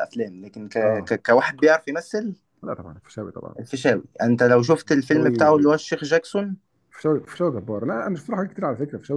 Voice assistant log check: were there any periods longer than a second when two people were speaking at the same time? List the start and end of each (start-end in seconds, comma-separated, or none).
none